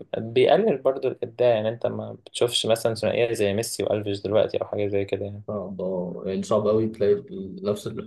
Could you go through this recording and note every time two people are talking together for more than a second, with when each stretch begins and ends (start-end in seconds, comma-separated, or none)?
none